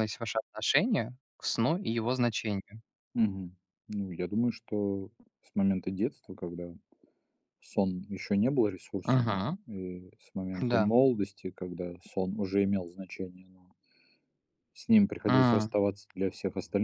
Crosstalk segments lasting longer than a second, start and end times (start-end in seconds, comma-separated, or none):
none